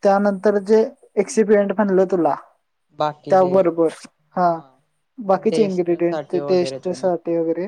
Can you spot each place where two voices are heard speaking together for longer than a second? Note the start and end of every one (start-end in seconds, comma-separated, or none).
5.5-7.1